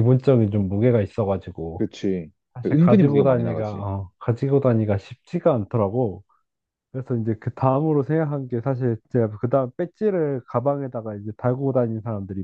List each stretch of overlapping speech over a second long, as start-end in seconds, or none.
2.5-3.9